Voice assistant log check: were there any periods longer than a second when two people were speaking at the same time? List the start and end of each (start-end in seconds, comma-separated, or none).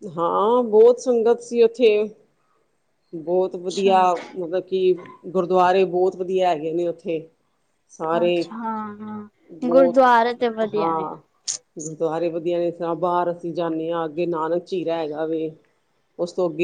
none